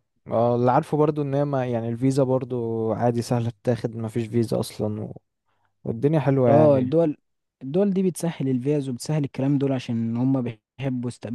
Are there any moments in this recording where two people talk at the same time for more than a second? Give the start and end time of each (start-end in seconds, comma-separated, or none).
none